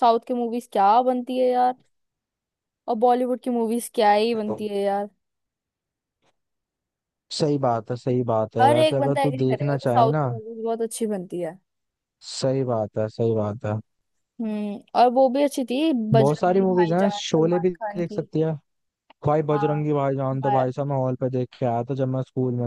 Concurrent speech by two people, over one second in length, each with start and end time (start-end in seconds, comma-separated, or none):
8.6-10.2, 16.2-18.2